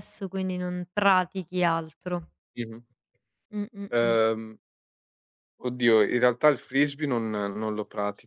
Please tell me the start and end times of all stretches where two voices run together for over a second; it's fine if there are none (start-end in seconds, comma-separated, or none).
none